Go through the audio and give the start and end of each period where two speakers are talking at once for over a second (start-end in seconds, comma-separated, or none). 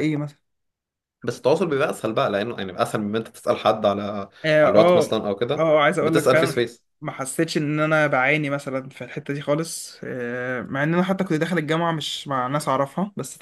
4.6-6.8